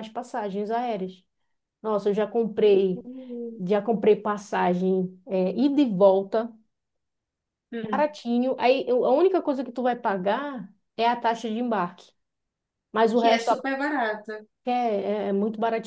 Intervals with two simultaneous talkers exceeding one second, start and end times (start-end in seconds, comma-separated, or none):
none